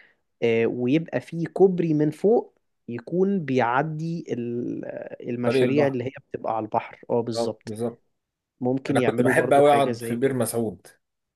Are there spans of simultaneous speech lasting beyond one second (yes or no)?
yes